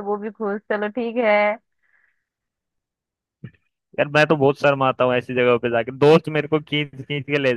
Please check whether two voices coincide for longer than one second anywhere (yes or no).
no